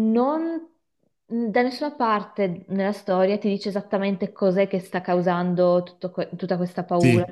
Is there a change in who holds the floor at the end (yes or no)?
no